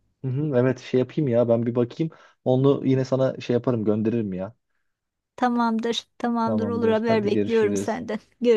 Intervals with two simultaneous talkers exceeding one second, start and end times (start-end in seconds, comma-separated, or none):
6.4-8.0